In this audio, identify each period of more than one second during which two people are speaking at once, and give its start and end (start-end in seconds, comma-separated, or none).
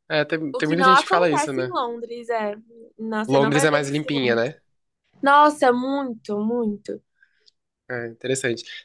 0.5-1.8, 3.2-4.5